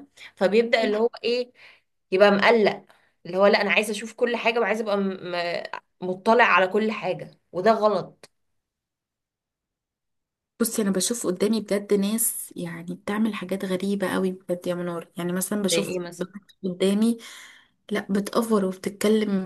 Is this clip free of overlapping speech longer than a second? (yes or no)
yes